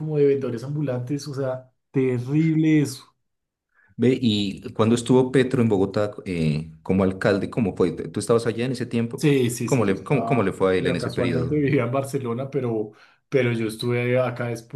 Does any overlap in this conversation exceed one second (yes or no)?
yes